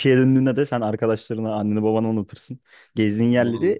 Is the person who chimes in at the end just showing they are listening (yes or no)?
yes